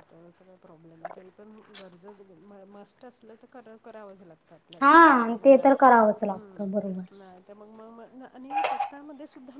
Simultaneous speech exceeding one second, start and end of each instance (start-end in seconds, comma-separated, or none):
none